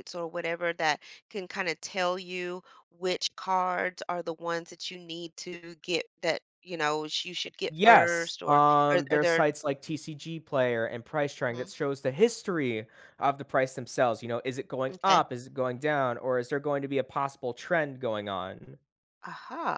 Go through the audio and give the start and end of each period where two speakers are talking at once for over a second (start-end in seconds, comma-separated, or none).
7.7-9.5